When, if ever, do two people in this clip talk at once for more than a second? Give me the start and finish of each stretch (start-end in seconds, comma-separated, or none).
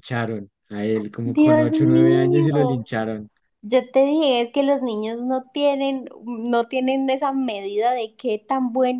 1.2-2.9